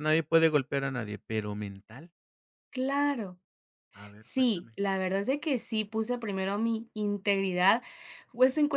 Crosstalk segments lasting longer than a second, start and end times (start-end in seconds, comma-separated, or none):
none